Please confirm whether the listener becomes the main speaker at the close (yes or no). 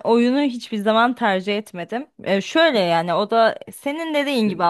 no